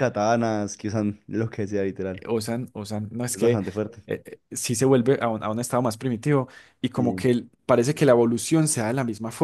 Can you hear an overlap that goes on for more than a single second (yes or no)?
no